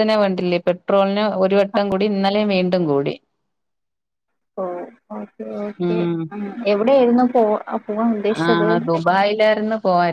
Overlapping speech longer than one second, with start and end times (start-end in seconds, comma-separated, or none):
none